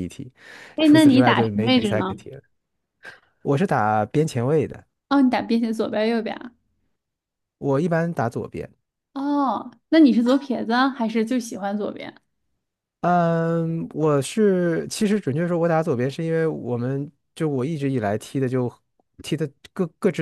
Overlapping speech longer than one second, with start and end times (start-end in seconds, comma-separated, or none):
0.8-2.1